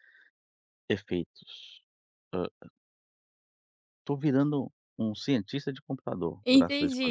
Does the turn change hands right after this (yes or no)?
yes